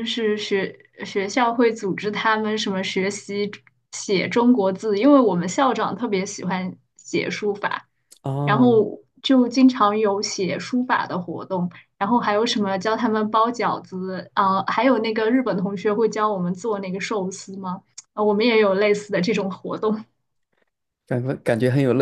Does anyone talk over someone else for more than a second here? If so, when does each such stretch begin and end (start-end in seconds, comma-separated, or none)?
none